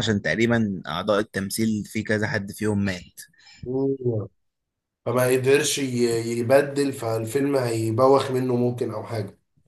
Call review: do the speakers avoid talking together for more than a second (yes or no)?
yes